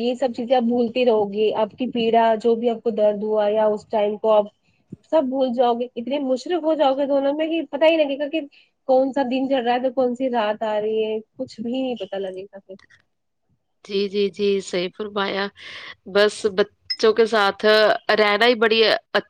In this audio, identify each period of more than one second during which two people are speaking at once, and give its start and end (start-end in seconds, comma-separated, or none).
none